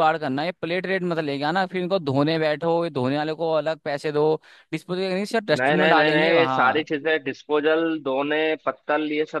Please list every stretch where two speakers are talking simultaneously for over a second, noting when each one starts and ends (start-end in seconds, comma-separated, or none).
5.6-6.9